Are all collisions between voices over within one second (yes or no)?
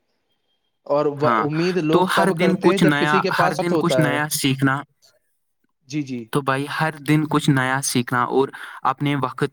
no